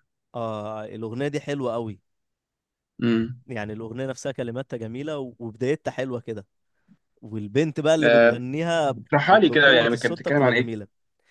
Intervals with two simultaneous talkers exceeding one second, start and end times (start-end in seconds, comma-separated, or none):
9.5-10.7